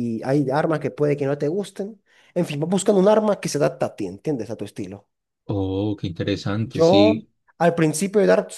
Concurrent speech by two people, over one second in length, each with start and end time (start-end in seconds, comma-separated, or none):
none